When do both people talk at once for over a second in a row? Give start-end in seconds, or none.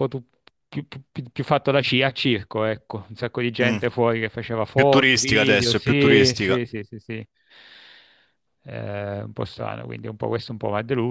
4.7-6.6